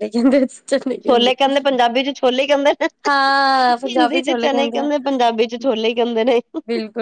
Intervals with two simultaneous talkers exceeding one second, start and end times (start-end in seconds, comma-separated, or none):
3.1-4.9